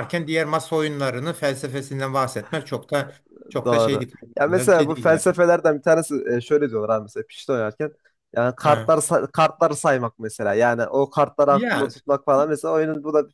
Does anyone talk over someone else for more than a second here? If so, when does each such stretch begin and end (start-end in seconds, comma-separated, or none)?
none